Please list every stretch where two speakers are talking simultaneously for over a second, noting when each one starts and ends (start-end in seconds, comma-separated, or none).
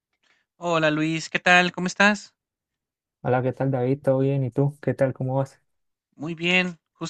none